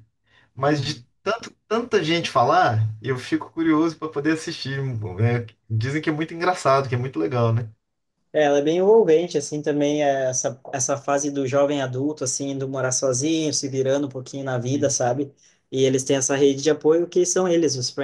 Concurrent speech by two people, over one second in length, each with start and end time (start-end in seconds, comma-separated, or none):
none